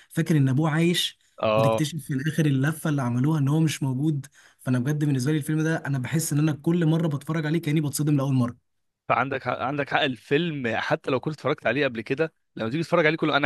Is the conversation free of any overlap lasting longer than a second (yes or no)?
yes